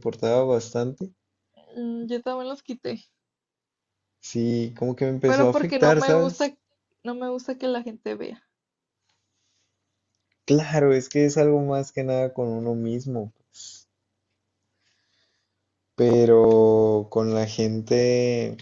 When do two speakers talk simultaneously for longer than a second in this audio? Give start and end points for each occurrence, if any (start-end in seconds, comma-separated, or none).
5.3-6.5